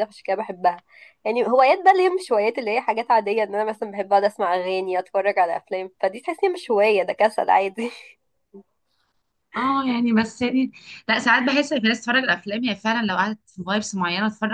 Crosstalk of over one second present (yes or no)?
no